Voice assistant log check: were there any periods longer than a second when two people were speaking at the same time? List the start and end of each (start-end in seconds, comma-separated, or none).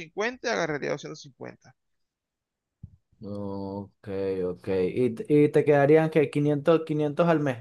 none